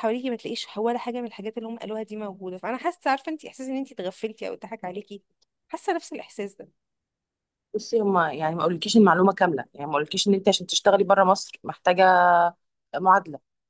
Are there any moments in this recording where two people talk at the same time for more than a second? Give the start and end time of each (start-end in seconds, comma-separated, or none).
none